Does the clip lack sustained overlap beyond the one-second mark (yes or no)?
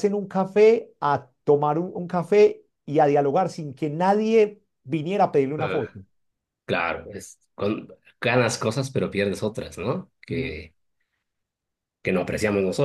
yes